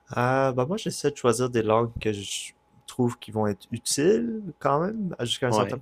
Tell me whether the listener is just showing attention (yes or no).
yes